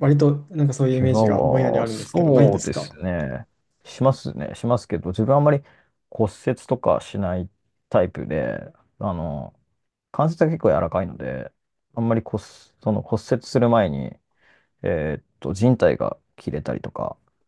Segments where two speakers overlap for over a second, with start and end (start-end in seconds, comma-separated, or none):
0.9-2.9